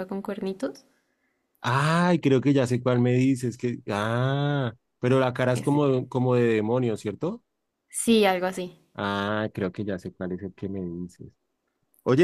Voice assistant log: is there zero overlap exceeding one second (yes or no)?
yes